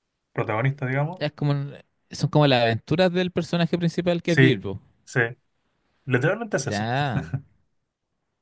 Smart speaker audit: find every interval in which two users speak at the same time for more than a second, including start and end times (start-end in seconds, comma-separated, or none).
none